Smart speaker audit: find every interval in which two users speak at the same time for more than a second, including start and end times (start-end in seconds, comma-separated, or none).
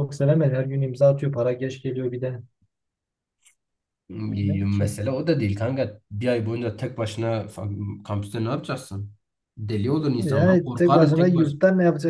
10.2-11.5